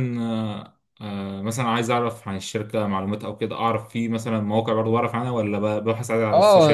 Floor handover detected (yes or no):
yes